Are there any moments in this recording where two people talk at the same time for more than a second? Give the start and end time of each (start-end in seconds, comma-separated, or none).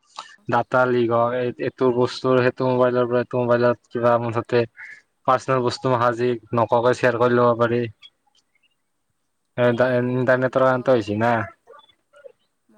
9.7-11.3